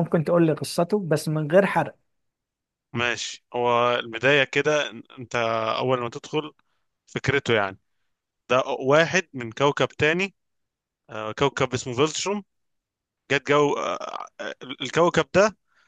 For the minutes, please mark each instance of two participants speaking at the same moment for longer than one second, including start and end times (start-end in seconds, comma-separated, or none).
none